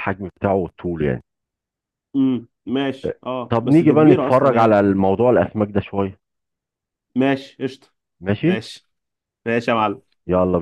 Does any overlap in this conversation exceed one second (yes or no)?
yes